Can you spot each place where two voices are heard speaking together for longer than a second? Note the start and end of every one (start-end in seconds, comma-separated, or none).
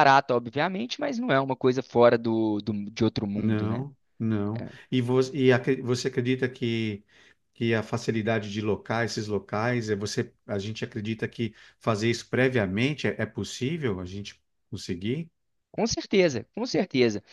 none